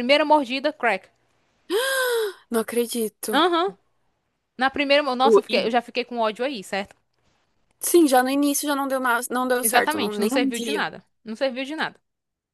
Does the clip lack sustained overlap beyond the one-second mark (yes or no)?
no